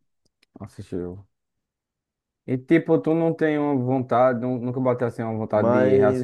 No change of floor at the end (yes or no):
no